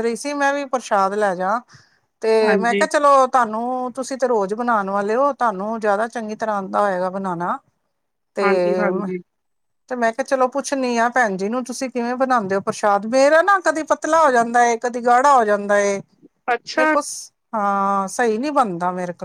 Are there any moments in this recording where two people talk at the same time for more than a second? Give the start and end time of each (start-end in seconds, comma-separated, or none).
none